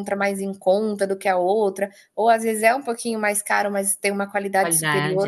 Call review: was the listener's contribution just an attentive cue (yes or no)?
yes